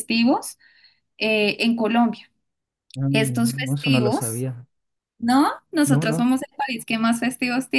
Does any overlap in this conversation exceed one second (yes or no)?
yes